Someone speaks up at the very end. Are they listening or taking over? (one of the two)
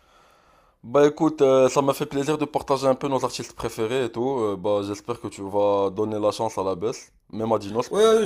taking over